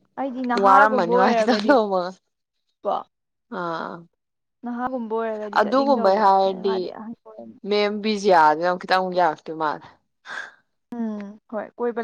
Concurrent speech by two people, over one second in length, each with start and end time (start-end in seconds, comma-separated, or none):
0.7-1.9